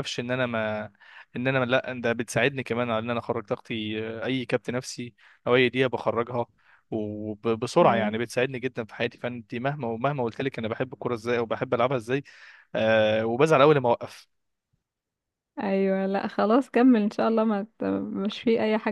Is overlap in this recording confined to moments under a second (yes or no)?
yes